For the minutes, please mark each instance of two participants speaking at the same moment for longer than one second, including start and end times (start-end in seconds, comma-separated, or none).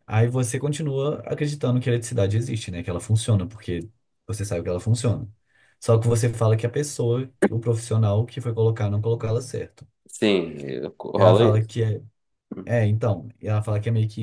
none